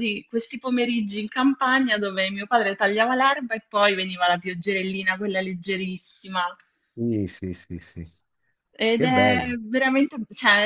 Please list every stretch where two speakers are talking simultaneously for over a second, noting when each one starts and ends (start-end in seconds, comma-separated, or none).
none